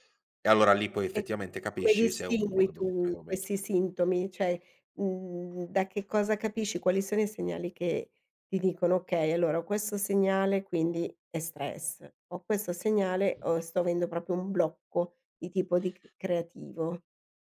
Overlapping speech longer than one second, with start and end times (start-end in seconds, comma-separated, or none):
1.1-3.4